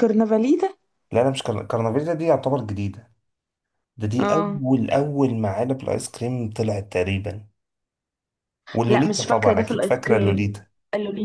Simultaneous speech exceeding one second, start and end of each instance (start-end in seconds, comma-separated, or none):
8.9-10.5